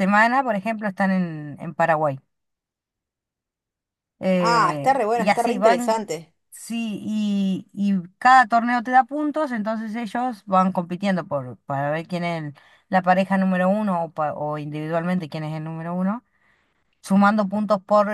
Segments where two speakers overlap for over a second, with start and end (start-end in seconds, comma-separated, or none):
4.4-6.0